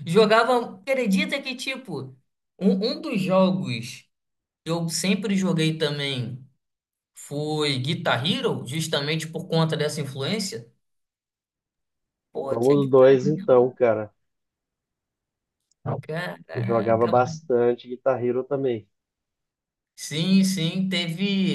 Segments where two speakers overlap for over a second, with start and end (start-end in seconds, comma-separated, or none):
12.5-13.7